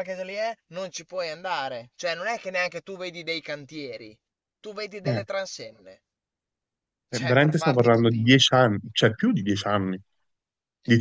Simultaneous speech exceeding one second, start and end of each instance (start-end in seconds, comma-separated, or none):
7.1-8.5